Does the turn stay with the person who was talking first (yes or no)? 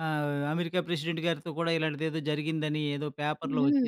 no